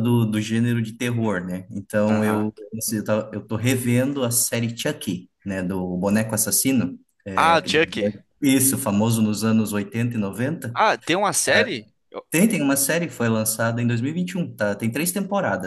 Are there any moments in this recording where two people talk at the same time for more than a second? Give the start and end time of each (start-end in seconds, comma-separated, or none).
none